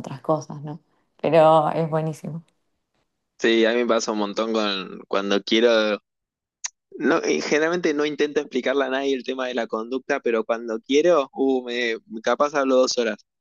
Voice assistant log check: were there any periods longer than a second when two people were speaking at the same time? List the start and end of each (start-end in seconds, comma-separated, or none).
none